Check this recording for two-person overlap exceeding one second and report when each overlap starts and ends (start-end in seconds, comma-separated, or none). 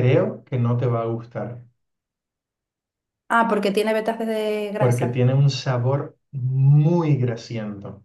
none